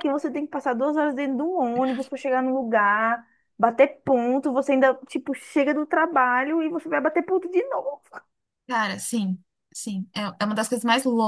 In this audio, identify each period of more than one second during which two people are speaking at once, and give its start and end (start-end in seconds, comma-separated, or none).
none